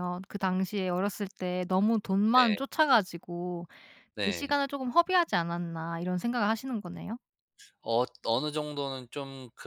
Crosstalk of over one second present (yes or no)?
no